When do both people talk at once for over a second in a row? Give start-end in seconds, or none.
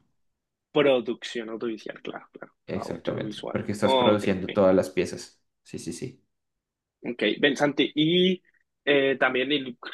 2.7-4.2